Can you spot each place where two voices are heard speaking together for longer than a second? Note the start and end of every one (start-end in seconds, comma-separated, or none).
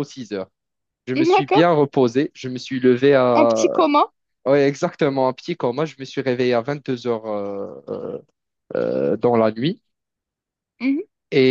none